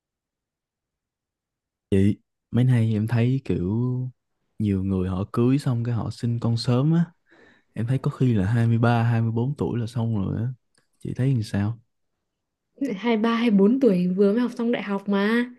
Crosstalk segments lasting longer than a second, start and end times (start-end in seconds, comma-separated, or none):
none